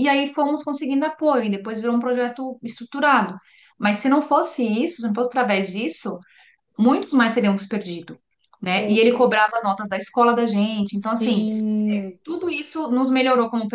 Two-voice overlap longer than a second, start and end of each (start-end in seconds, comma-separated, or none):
none